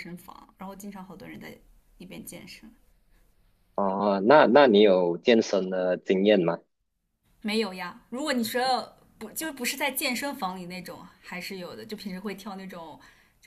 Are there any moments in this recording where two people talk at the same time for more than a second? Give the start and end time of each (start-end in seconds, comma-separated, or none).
none